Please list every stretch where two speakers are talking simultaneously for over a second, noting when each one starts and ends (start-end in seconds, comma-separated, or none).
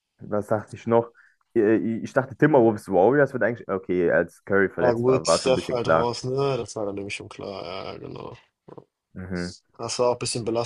4.8-6.1